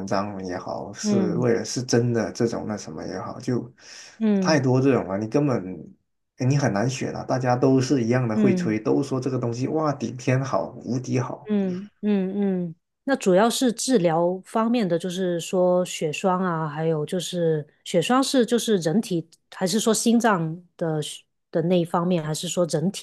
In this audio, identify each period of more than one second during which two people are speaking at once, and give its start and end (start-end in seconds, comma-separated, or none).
none